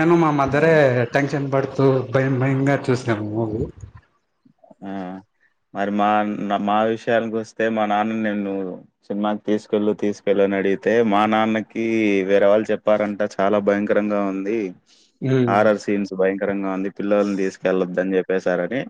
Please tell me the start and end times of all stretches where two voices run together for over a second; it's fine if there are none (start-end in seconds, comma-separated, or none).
none